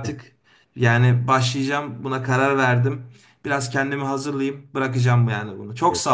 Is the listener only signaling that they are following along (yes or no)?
no